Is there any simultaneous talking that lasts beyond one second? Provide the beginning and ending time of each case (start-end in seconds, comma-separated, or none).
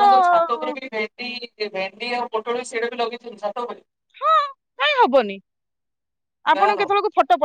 none